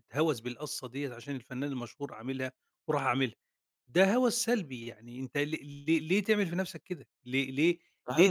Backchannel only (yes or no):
no